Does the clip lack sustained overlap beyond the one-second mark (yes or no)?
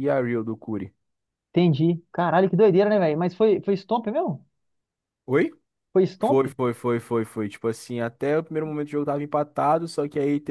yes